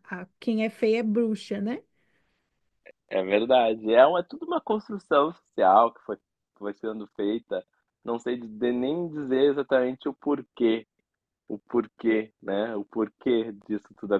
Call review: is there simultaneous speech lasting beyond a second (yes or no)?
no